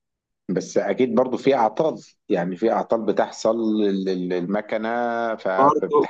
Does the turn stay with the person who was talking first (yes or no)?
no